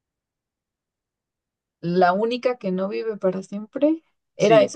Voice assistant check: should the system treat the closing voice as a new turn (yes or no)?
yes